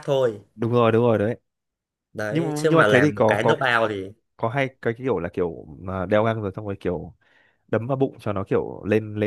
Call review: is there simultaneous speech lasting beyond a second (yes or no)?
yes